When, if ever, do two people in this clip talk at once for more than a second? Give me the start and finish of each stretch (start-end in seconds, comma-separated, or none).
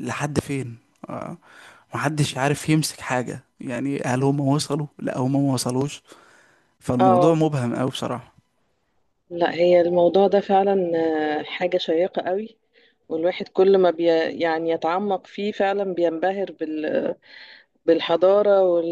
none